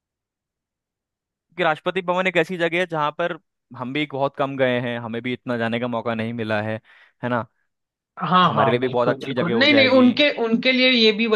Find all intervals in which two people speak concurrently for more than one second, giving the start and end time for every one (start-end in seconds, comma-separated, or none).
8.4-10.1